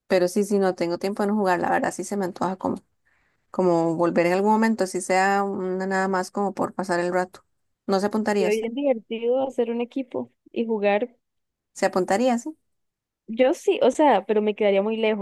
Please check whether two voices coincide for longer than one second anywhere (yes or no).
no